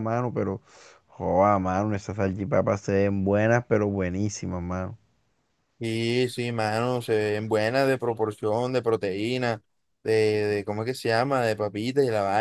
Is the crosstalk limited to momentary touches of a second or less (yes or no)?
yes